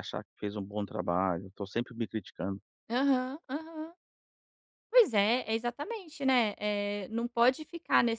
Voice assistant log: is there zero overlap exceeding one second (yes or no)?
yes